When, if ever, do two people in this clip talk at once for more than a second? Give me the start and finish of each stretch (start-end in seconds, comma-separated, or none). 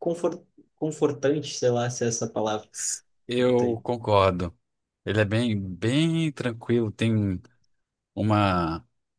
none